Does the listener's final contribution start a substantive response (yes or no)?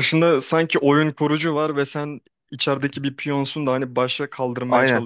yes